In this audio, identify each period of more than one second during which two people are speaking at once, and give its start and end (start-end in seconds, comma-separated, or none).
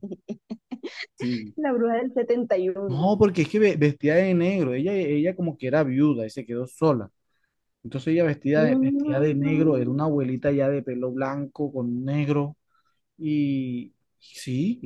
8.5-10.0